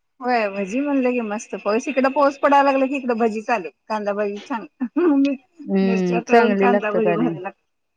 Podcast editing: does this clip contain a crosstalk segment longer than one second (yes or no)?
yes